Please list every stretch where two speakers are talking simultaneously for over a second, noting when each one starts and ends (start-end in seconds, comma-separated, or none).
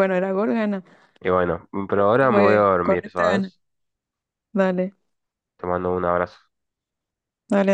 2.3-3.5